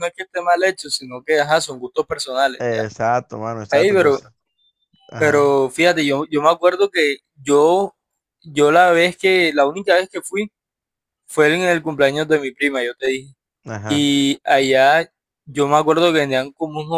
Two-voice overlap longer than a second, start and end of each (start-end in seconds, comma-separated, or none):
none